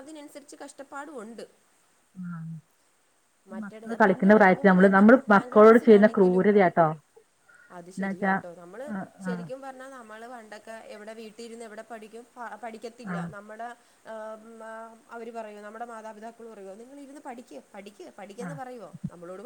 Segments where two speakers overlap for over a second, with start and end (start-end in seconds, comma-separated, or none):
3.6-6.4